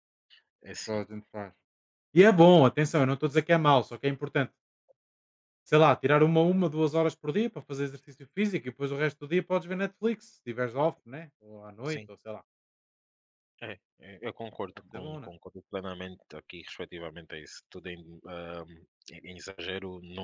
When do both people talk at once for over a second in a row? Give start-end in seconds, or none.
none